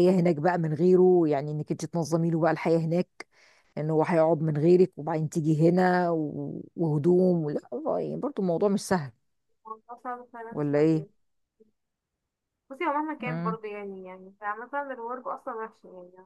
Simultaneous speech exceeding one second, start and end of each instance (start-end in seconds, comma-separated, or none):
none